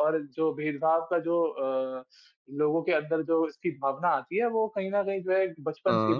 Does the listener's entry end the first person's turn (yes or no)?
no